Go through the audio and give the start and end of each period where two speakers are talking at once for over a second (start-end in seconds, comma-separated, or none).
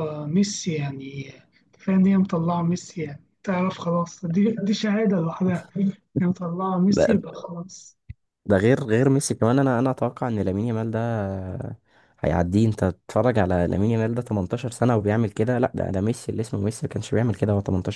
none